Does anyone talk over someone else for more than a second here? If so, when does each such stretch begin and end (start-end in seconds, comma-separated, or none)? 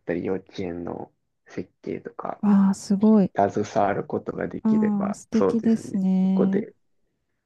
4.6-6.7